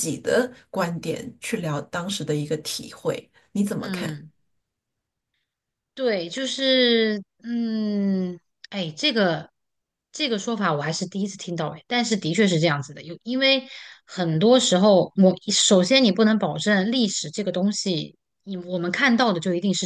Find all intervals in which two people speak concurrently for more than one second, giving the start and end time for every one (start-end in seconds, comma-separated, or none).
none